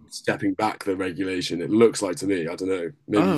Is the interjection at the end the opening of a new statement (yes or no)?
yes